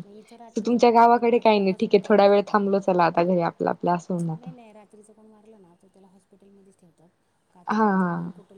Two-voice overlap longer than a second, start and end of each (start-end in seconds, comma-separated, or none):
0.7-2.6